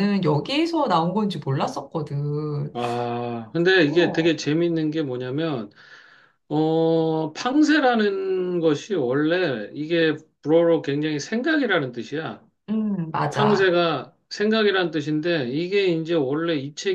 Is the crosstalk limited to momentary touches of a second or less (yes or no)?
yes